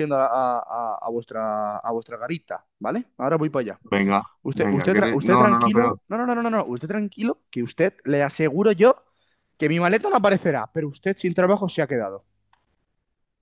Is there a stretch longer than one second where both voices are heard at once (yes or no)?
yes